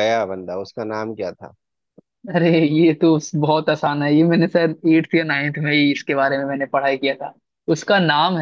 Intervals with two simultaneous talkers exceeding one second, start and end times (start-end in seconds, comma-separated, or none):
none